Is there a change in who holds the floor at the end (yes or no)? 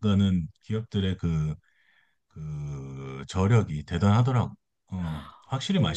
yes